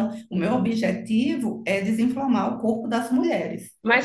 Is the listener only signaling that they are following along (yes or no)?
no